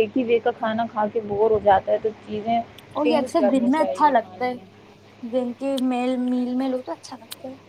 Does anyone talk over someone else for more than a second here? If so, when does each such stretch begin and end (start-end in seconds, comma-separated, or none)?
3.0-4.5